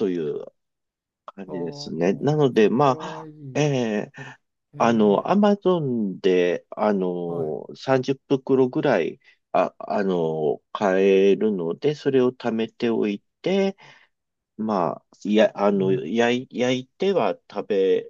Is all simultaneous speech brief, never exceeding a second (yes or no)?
no